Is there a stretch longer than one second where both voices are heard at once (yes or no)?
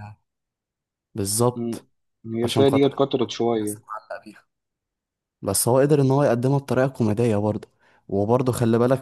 yes